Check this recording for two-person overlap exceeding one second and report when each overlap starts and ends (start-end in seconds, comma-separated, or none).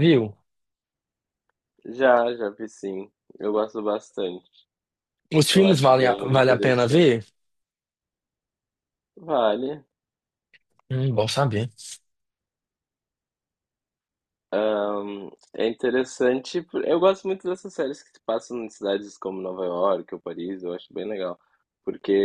5.5-7.1